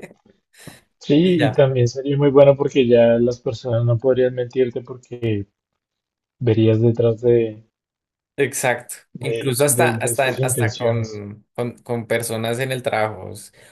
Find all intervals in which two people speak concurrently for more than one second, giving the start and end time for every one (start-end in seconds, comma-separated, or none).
9.1-11.2